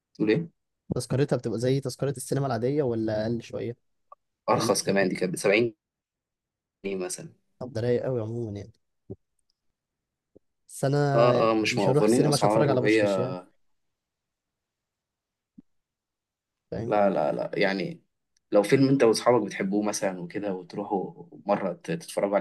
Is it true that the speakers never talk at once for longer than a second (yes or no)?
no